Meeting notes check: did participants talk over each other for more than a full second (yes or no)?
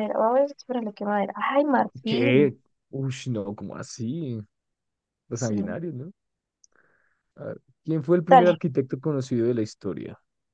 no